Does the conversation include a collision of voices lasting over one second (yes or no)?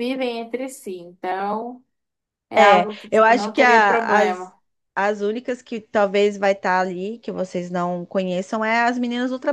yes